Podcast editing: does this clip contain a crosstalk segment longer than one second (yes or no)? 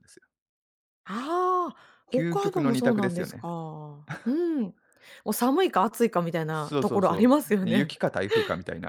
yes